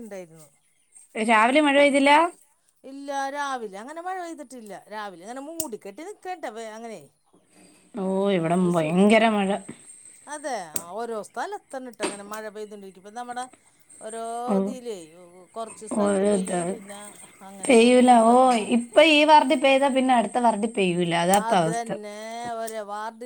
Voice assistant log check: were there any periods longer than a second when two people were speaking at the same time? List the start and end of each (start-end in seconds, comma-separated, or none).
none